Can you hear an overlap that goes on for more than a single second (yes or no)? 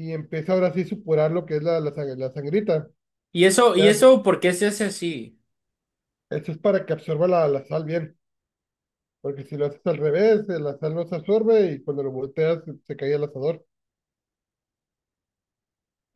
no